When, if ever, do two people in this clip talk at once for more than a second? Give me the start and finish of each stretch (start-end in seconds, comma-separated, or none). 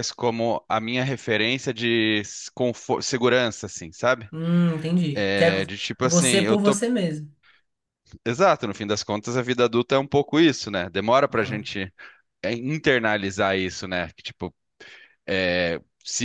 5.1-6.8